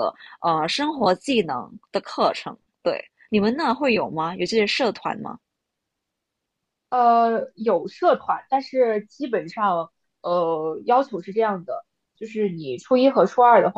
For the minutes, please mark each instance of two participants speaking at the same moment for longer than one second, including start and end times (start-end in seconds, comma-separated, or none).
none